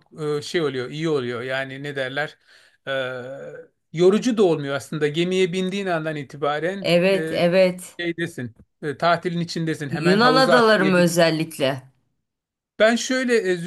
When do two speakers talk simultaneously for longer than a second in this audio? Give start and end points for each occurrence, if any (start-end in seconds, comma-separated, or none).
9.9-11.2